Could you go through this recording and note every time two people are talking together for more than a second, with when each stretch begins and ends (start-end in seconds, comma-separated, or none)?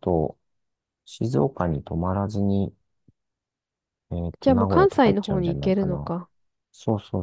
4.4-6.1